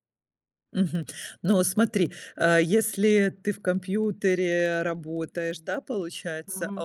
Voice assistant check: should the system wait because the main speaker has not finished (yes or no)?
yes